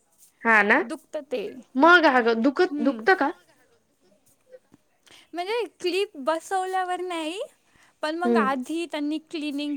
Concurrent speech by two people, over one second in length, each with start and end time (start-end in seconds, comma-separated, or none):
none